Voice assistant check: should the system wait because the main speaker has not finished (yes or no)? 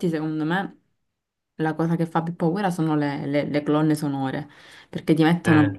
yes